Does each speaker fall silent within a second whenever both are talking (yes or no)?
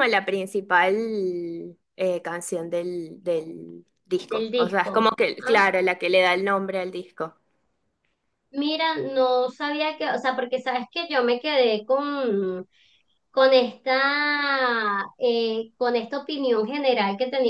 no